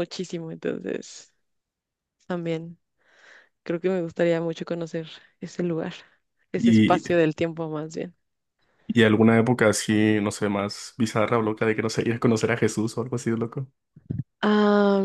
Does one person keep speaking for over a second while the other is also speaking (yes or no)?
no